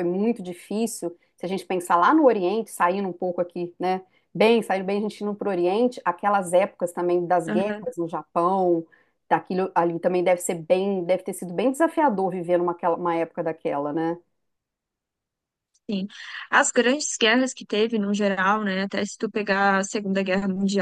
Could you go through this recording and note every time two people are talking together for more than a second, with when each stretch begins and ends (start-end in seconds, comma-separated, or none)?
none